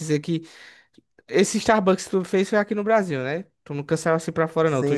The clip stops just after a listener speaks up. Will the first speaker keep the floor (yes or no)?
no